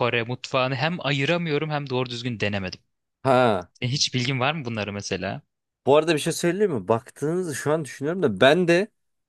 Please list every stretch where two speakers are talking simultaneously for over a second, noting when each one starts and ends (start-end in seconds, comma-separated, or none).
none